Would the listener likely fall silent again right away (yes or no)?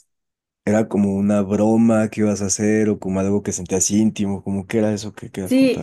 no